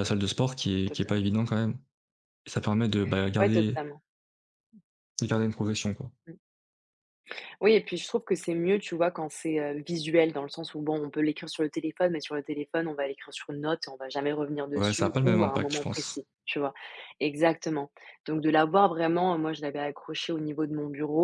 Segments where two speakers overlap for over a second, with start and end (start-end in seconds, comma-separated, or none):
14.8-16.2